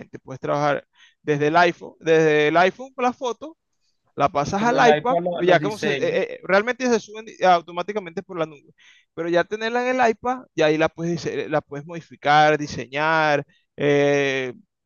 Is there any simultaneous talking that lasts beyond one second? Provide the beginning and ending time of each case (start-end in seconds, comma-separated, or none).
4.5-6.2